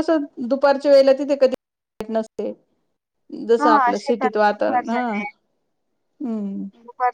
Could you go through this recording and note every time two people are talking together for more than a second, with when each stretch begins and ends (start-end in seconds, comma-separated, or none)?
3.6-5.0